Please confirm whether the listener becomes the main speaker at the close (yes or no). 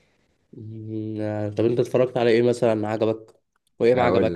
yes